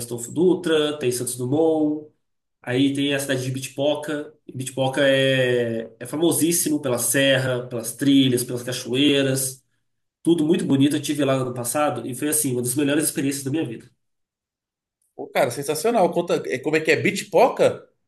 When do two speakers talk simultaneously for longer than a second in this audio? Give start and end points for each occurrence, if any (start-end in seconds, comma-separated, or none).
none